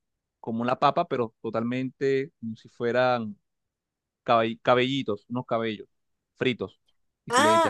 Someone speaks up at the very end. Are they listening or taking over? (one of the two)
taking over